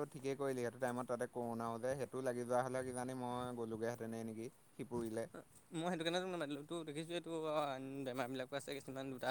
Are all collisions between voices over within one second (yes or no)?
yes